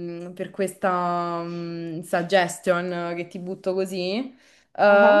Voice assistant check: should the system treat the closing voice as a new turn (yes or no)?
no